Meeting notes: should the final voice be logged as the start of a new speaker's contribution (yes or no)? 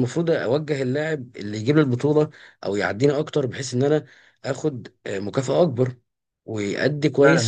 yes